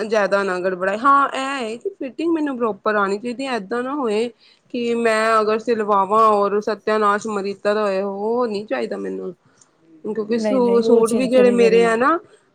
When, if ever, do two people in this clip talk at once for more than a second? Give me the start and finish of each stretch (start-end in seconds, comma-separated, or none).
10.1-12.0